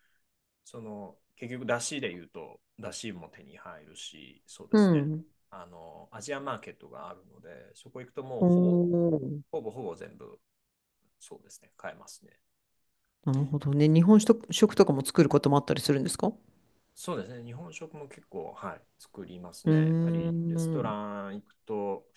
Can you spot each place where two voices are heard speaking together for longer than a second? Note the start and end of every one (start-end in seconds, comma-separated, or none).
19.6-21.0